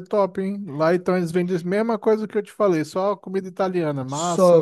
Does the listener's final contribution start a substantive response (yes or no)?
yes